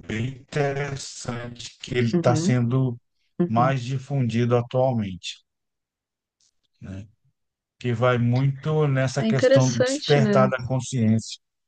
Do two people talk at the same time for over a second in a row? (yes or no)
yes